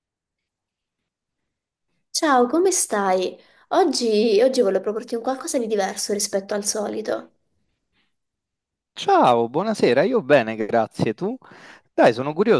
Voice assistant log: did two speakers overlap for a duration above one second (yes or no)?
no